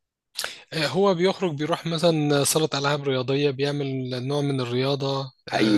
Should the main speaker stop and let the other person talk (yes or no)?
yes